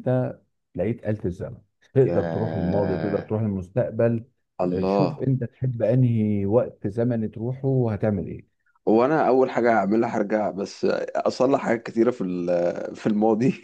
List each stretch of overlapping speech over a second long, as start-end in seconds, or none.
2.0-3.3